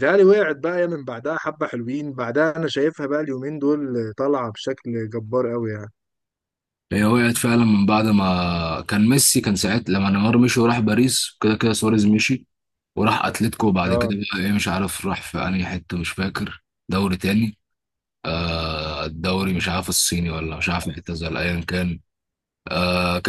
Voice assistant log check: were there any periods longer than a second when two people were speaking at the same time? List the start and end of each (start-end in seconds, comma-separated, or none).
none